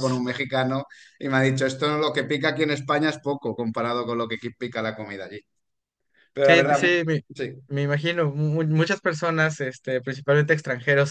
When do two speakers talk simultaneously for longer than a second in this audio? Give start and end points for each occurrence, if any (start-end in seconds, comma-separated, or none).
none